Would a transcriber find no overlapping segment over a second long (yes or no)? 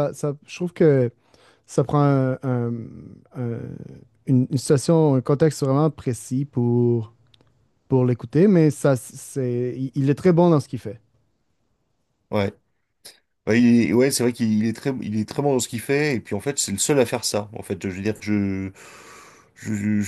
yes